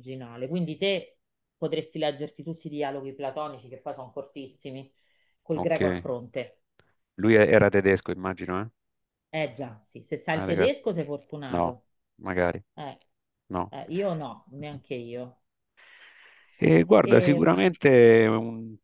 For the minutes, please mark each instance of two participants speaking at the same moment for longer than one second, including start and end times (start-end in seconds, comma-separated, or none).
none